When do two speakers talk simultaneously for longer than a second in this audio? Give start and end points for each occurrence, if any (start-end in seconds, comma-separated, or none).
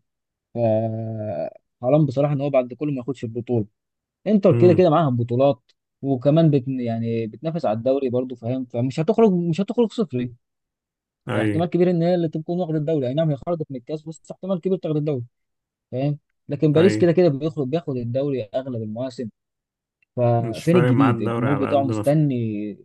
20.4-22.1